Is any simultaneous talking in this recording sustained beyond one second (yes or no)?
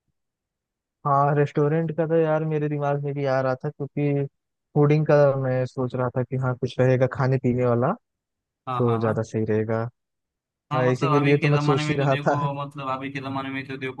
yes